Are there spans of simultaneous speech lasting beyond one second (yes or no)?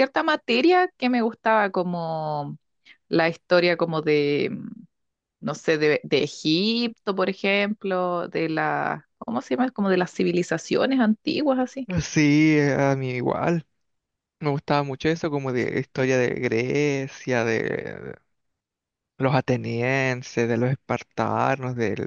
no